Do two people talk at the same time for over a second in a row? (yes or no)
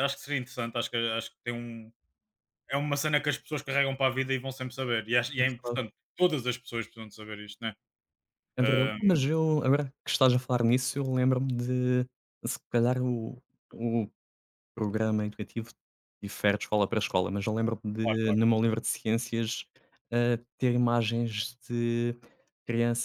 no